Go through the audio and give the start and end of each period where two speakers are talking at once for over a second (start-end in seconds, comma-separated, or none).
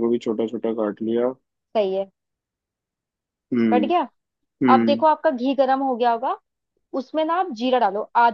none